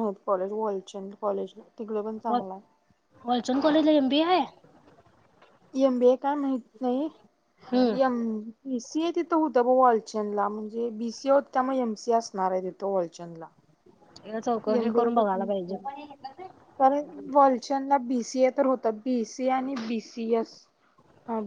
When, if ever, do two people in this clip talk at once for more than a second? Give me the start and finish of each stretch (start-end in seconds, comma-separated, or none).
none